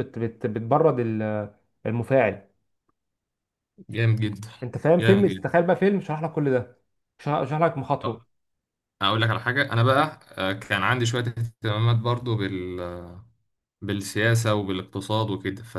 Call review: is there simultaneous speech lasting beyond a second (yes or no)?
no